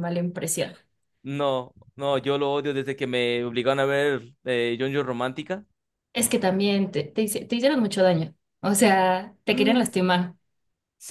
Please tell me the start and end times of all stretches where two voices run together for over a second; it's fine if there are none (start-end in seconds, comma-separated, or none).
none